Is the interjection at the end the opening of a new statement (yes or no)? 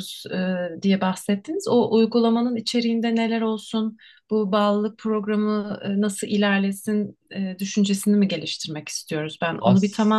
no